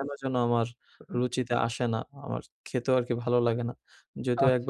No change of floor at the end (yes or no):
yes